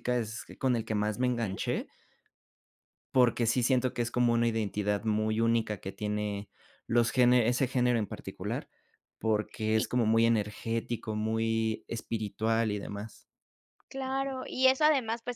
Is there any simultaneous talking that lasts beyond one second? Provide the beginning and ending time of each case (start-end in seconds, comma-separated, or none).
none